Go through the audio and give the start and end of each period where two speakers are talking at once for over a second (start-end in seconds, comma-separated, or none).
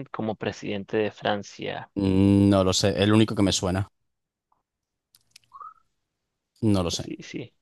none